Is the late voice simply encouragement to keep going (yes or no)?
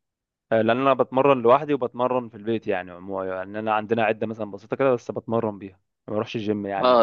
no